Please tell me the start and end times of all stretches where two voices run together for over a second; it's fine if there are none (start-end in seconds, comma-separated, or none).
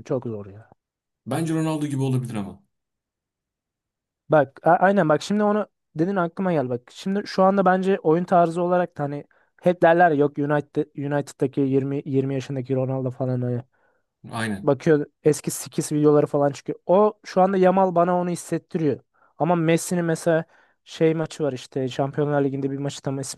none